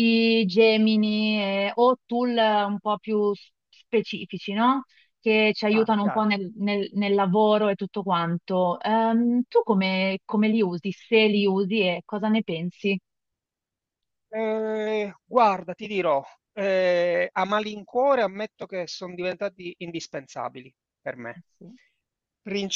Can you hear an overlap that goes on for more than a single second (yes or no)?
no